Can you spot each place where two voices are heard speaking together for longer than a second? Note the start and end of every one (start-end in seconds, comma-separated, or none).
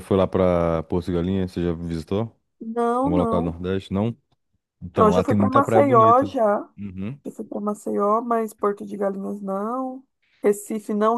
5.0-6.3